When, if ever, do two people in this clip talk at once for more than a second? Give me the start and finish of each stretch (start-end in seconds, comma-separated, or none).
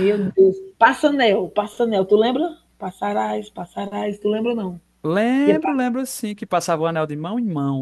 none